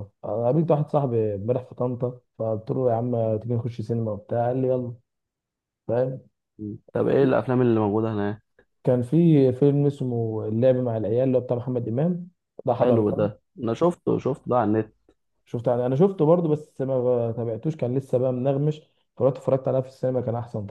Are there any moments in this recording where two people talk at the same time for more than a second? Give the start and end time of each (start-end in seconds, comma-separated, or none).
none